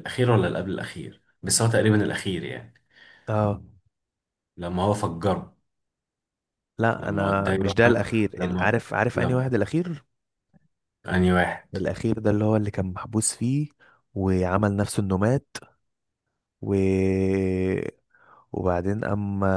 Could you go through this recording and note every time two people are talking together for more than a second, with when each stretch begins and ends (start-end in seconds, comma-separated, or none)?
7.0-9.5